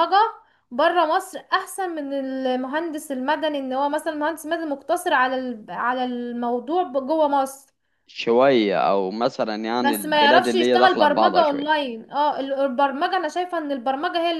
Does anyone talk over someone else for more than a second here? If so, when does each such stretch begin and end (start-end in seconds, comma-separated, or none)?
9.8-11.7